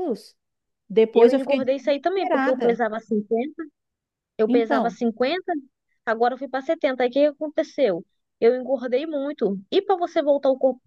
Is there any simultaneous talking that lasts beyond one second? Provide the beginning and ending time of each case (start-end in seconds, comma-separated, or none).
1.1-2.8